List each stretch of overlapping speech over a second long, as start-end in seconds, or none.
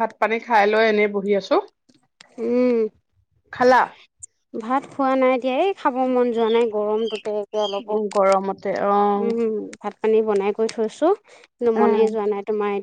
none